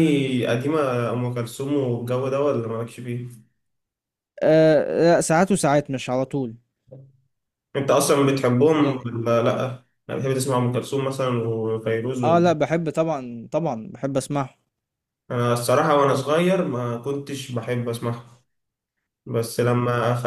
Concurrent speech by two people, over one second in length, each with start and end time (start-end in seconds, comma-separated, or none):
none